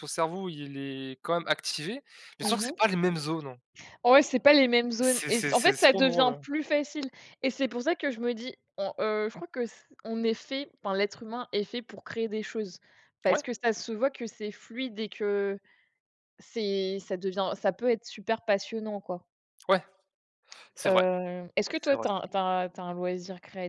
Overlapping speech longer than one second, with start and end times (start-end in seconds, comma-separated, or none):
5.0-6.5